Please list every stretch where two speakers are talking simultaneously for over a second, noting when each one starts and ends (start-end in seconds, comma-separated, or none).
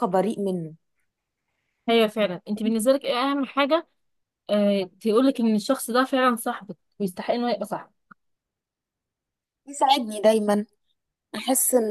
none